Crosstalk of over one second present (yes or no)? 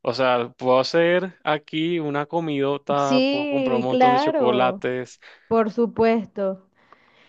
yes